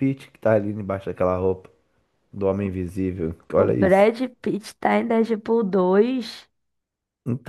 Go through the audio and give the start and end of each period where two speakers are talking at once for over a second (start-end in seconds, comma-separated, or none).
none